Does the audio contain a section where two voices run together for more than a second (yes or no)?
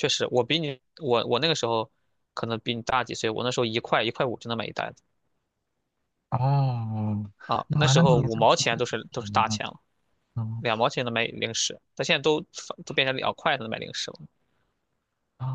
yes